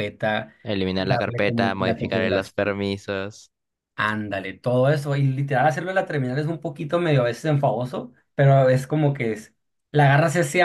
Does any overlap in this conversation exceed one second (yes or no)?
yes